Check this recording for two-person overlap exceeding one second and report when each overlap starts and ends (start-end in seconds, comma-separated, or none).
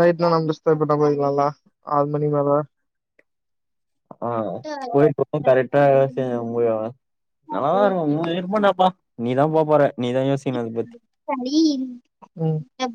none